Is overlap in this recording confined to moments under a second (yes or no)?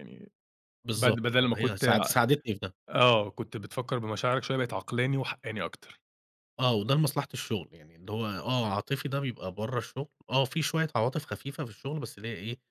no